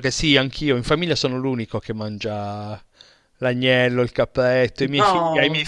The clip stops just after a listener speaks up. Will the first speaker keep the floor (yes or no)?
yes